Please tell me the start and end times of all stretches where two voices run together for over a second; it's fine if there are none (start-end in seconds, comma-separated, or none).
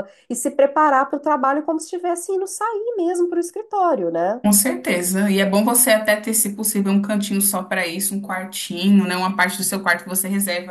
none